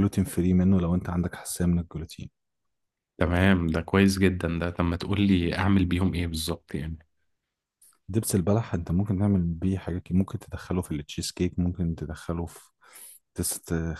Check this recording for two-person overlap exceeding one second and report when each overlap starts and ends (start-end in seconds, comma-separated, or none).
none